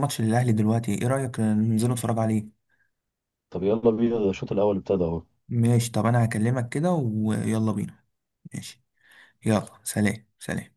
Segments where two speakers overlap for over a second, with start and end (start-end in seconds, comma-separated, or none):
none